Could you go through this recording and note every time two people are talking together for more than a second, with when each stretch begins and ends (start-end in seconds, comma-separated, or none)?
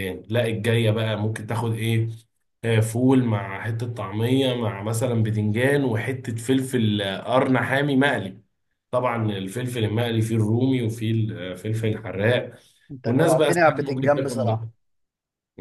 13.1-14.6